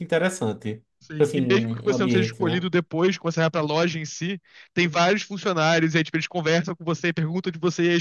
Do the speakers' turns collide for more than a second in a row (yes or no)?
yes